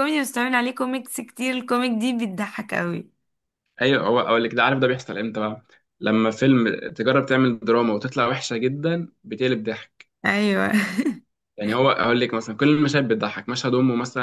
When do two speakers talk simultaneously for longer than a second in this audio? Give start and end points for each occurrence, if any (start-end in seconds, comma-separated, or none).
none